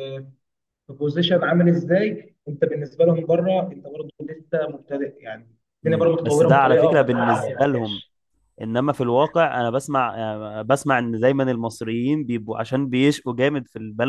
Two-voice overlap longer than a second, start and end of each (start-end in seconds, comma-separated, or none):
5.8-8.0